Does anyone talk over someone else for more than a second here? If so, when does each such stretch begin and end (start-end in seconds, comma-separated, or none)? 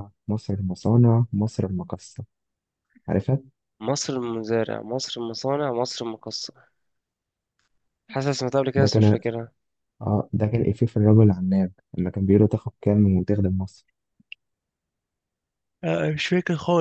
none